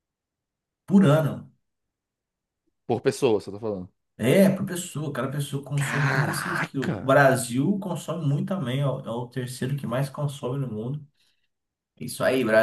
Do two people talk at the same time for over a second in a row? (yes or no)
yes